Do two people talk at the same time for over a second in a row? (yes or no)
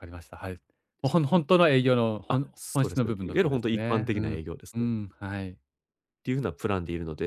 yes